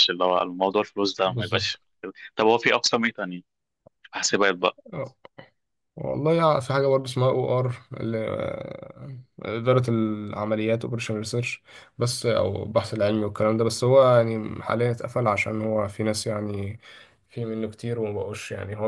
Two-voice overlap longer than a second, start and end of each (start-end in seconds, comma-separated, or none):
none